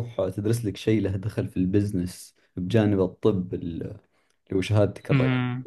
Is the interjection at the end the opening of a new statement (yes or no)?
yes